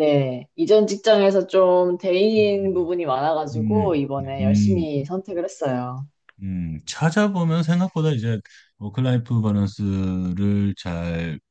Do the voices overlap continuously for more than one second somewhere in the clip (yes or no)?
yes